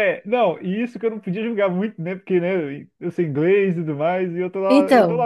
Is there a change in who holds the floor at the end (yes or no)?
no